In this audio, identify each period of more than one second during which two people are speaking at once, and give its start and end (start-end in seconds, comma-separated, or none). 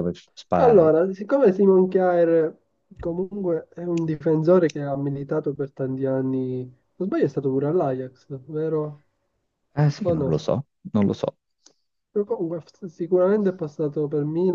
none